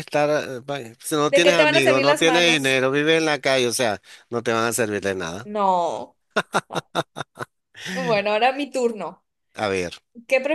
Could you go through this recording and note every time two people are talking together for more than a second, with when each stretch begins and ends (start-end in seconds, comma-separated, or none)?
1.3-2.8